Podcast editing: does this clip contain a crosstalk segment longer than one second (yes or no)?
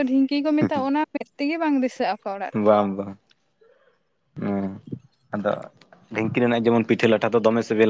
no